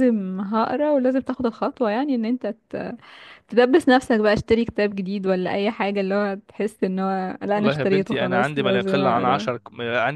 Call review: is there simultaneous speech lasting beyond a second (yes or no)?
yes